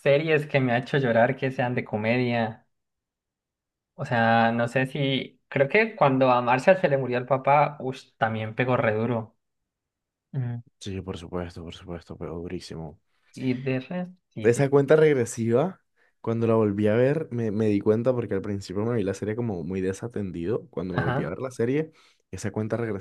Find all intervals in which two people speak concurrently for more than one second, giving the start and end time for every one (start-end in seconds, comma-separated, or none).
none